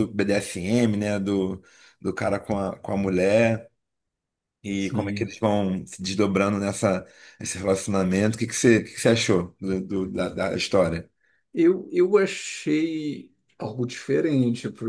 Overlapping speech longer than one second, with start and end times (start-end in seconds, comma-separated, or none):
none